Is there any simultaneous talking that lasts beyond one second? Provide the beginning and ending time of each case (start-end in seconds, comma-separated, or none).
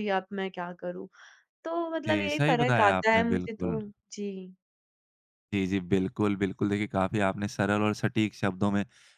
2.1-3.8